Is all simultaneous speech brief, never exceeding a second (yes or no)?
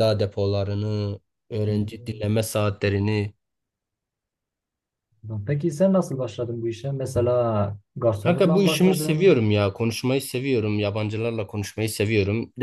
no